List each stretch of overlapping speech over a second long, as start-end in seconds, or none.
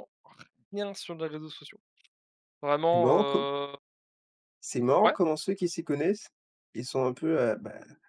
none